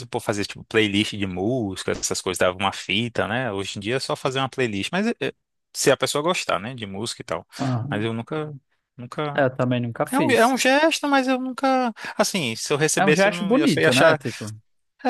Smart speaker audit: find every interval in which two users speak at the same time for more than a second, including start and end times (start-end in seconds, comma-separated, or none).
13.0-14.2